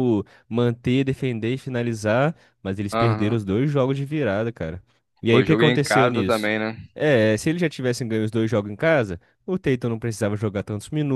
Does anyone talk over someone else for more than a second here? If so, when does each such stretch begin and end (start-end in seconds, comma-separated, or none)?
5.2-6.5